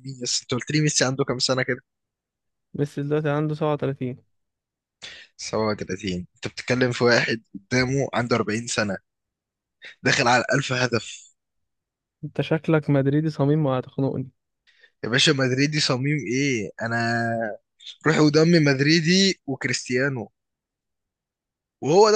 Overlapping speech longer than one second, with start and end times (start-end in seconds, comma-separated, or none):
none